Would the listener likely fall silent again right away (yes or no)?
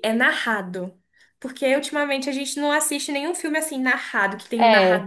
yes